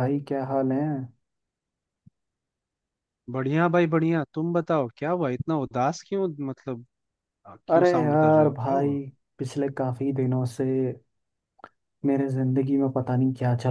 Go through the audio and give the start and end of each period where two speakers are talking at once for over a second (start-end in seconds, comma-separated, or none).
7.7-9.0